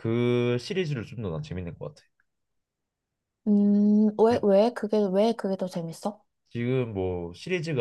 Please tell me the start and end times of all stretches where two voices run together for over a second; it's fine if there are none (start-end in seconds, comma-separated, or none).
none